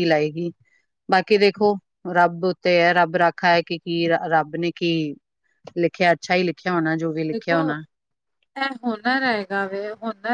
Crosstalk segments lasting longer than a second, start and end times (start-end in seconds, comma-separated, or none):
none